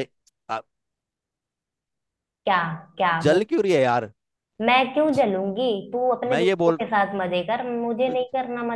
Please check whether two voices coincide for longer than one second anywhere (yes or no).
no